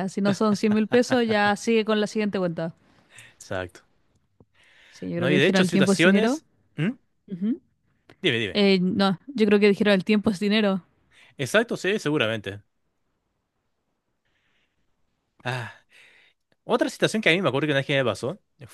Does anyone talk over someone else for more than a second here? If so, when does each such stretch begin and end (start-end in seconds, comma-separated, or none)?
5.2-6.4